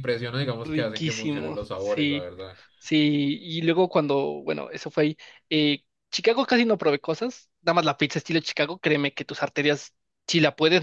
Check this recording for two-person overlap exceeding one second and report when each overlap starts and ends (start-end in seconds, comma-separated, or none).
0.6-2.3